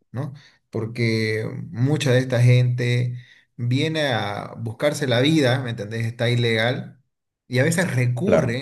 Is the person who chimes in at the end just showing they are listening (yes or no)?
yes